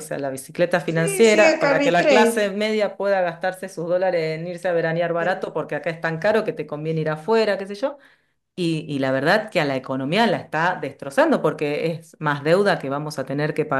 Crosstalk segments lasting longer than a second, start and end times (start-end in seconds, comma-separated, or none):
0.8-2.4